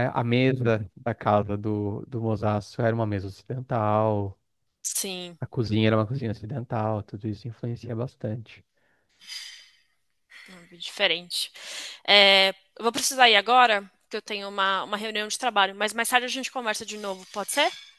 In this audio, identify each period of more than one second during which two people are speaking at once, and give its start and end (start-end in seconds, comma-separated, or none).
none